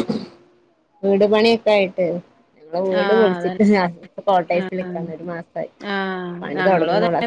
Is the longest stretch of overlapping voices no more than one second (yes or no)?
yes